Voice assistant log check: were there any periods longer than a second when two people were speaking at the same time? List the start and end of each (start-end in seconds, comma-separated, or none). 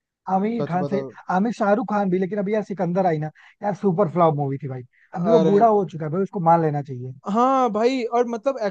none